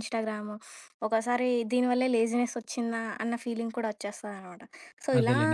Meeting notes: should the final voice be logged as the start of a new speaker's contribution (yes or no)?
yes